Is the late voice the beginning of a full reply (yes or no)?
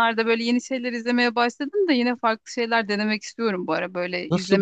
yes